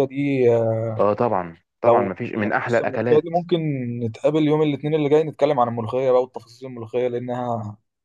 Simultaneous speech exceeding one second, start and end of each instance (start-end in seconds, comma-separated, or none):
1.8-3.4